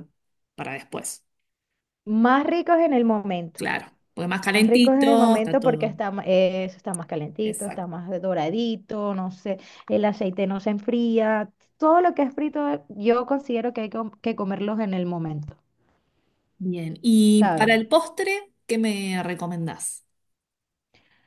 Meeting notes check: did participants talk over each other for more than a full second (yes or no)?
yes